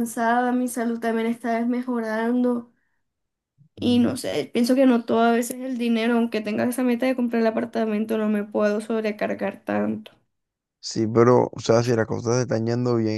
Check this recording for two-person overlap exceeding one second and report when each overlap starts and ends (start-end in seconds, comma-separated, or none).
none